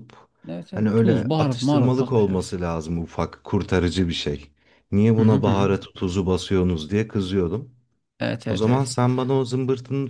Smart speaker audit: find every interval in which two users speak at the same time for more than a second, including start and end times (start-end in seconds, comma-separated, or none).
0.7-2.5